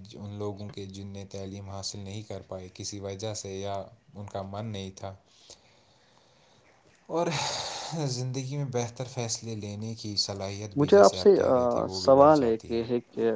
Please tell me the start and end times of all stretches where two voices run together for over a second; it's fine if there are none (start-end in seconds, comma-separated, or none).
10.8-12.8